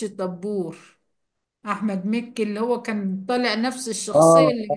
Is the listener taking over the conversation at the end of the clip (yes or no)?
no